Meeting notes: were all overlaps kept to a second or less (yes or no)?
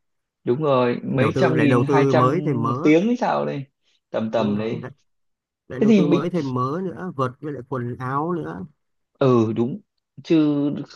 no